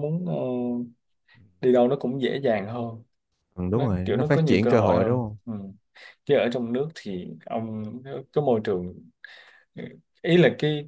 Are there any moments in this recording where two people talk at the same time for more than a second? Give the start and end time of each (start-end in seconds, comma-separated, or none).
3.7-5.4